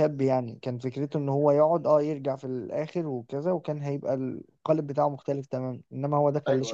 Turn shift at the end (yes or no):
no